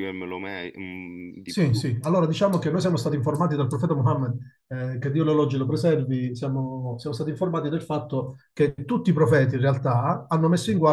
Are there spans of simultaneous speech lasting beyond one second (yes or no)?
no